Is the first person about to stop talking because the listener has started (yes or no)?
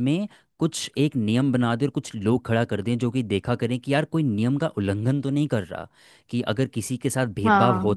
no